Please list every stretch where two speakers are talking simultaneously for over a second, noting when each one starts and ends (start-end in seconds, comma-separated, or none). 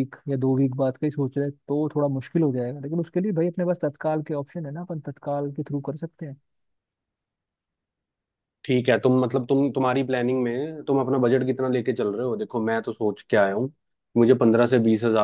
none